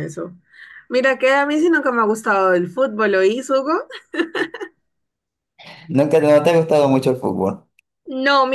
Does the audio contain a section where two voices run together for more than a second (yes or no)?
no